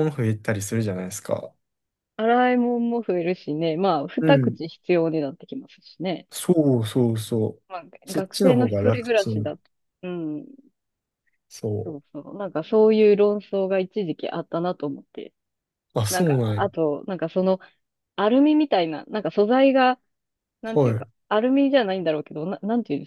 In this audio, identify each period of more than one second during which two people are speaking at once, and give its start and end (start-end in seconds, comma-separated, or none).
8.1-9.6